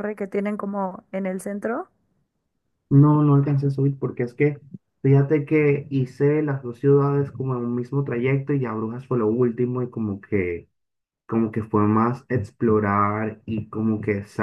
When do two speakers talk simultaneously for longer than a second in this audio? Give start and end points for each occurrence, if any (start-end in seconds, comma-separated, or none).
none